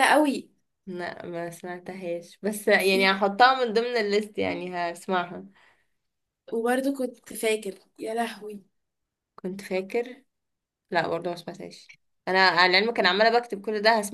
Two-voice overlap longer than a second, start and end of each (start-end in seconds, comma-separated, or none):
none